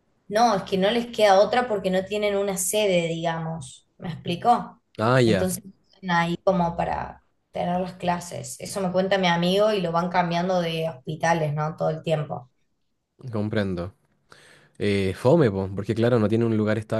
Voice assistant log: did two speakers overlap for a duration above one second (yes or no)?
no